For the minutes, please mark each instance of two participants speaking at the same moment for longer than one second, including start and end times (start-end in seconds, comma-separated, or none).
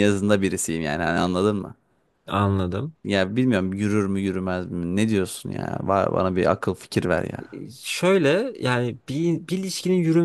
none